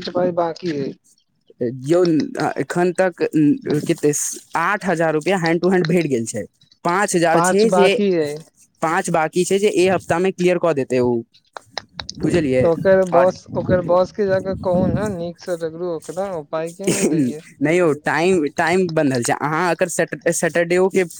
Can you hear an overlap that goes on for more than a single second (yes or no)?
no